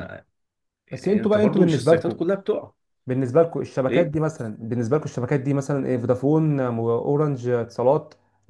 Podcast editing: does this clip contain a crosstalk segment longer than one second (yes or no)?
yes